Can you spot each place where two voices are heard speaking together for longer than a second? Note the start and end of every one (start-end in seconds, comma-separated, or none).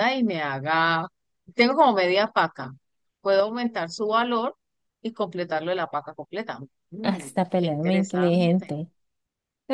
7.0-8.8